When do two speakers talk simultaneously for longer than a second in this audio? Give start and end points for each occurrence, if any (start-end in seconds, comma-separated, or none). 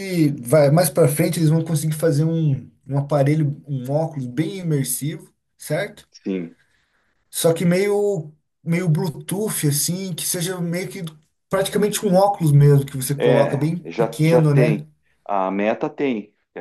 13.2-14.8